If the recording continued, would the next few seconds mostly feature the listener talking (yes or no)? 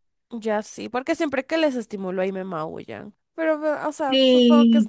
yes